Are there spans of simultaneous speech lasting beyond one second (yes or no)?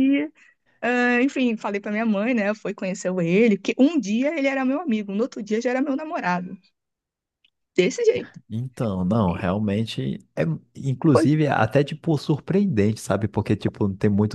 no